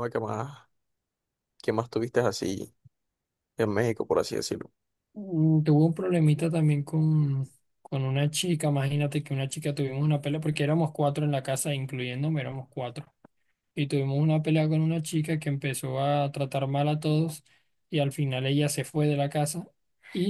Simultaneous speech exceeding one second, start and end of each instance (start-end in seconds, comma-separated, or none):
none